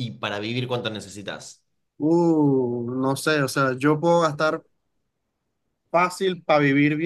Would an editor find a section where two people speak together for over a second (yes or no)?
no